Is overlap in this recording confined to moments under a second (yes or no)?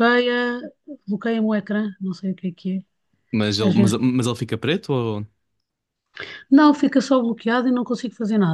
yes